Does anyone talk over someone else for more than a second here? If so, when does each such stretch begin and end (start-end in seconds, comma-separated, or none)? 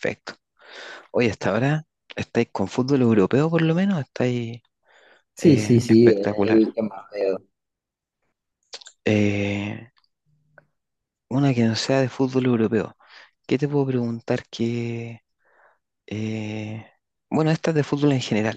5.4-6.6